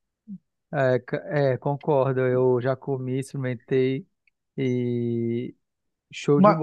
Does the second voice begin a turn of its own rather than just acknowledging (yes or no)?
yes